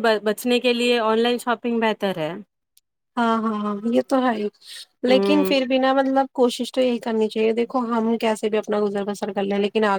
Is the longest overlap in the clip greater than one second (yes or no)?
no